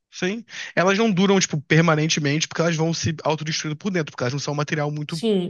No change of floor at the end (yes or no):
no